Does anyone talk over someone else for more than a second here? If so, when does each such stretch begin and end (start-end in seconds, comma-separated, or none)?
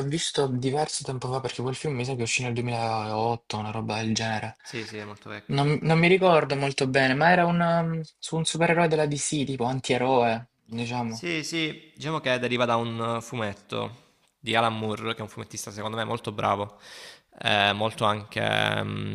none